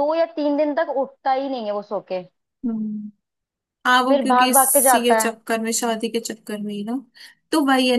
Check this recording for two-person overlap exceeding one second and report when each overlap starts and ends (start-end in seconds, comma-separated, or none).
4.1-5.3